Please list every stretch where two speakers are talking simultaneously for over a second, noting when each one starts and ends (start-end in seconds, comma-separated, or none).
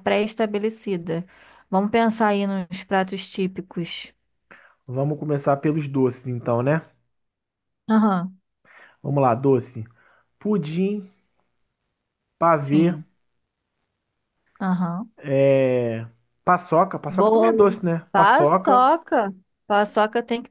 17.1-18.9